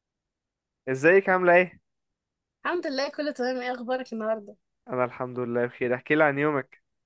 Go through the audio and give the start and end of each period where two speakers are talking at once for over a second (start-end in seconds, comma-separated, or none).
none